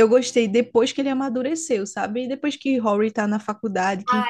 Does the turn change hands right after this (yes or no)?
yes